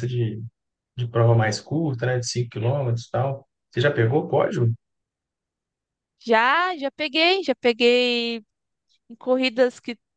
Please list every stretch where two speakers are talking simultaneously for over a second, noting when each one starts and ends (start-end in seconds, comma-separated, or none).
none